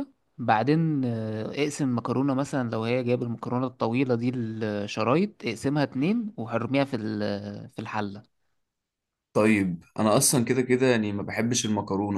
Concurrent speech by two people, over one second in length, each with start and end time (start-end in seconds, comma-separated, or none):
none